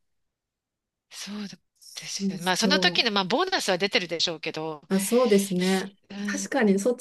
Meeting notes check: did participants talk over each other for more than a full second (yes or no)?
yes